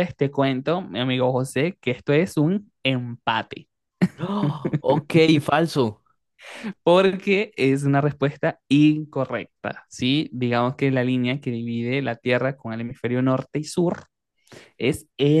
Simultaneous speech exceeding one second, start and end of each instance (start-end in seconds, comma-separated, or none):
none